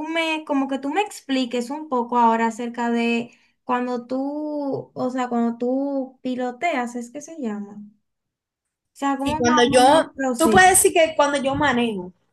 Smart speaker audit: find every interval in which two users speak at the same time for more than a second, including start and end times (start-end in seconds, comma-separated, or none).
9.2-10.7